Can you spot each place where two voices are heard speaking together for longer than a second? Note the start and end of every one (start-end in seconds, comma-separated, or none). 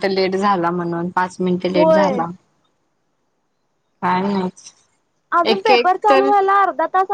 none